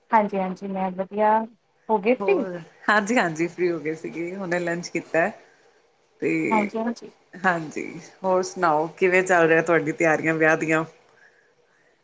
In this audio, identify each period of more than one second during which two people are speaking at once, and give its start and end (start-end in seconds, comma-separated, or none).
none